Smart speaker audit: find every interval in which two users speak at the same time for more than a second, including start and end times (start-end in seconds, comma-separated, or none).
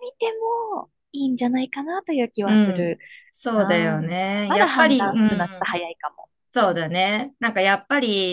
3.5-5.8